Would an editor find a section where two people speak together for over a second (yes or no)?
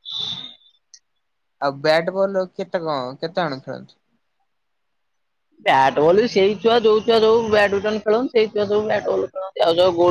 no